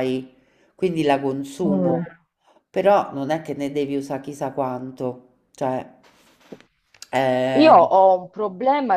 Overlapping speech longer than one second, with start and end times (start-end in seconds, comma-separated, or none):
none